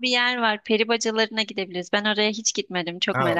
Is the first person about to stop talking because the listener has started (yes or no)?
yes